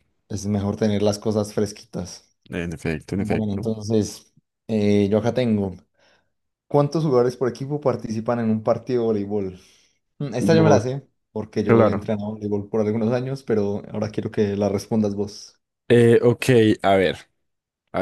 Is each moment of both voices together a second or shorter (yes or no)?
yes